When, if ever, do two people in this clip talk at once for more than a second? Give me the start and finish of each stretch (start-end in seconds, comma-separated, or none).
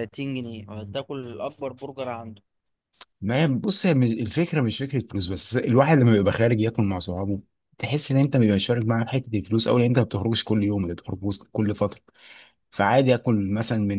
none